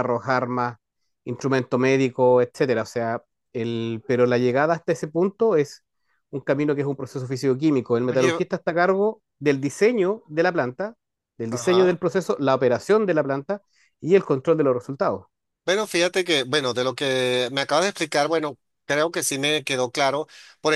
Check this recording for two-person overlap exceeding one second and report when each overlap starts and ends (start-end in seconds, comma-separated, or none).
none